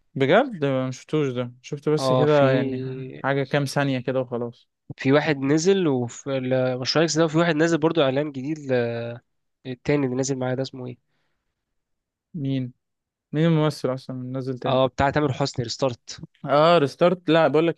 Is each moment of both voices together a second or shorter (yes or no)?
yes